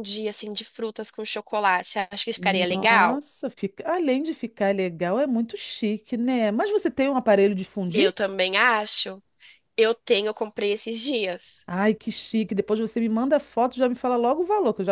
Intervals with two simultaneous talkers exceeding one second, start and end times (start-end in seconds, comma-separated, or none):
none